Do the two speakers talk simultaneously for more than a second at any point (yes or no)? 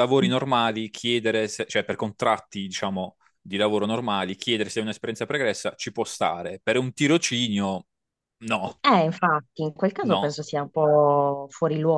no